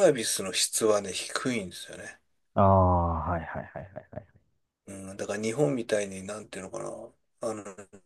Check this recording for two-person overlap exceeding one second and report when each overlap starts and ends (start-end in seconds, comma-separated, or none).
none